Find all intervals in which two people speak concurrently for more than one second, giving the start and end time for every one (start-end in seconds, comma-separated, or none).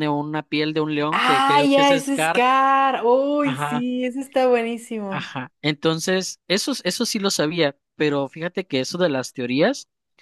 1.1-2.4